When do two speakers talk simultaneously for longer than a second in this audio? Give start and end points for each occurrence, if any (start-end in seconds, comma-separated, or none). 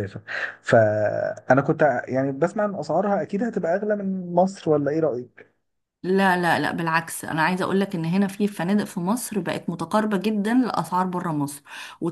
none